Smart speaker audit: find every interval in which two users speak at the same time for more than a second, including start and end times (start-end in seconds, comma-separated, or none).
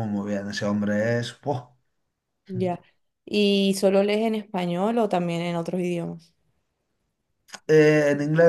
none